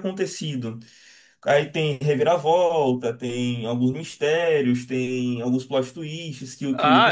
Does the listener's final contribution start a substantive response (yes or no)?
yes